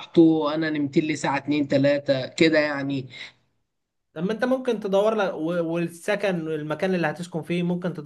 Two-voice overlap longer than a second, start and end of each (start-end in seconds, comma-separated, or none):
none